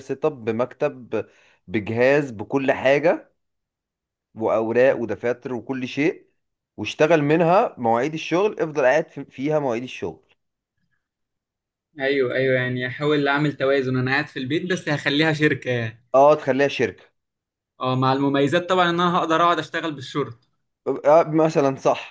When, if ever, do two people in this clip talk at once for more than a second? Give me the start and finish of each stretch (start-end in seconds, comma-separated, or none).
none